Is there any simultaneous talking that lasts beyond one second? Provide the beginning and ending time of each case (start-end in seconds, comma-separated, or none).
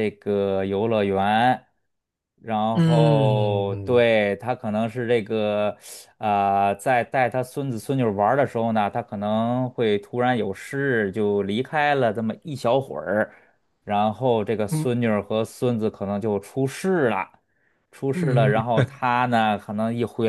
2.7-4.1